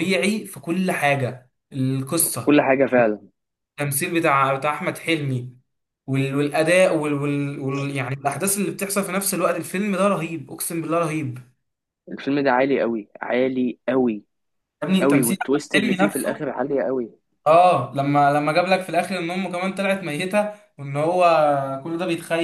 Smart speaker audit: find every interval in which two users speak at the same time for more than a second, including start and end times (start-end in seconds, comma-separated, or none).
15.0-16.5